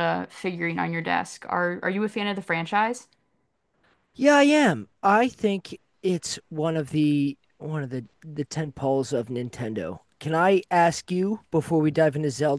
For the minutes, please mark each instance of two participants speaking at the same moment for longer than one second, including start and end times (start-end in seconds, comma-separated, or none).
none